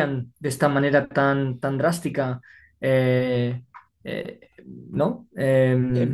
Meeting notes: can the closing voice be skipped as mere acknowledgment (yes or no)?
no